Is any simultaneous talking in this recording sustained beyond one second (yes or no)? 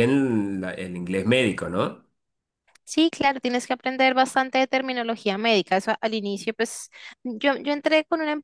no